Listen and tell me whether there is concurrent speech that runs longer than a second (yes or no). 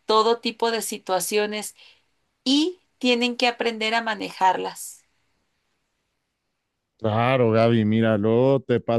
no